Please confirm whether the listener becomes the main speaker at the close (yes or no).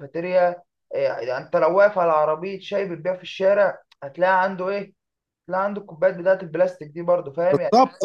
yes